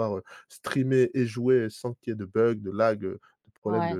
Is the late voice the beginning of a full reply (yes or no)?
yes